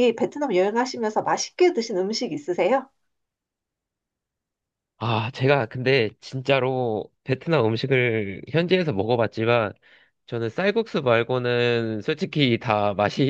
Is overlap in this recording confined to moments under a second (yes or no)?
yes